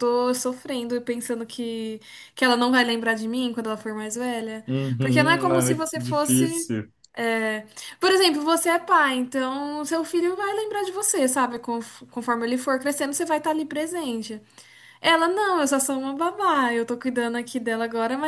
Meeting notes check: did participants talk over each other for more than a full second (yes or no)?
yes